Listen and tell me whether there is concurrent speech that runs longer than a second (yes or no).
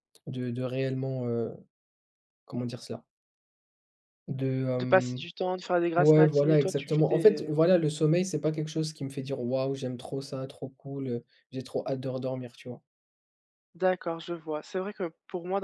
yes